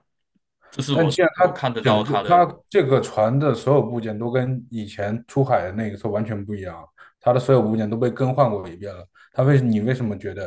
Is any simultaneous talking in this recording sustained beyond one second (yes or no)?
yes